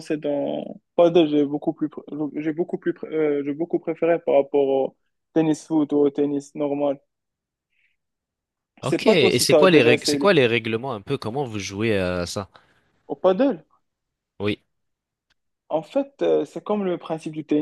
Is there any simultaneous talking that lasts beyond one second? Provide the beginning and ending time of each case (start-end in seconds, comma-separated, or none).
8.8-10.3